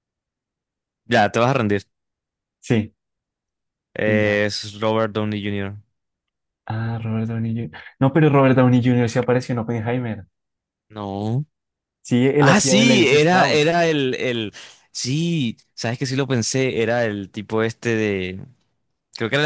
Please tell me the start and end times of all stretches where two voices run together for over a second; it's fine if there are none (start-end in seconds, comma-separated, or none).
12.4-13.8